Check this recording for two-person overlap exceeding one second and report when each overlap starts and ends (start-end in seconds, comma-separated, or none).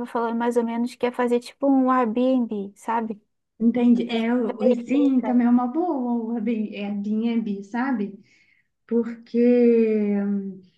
3.9-5.4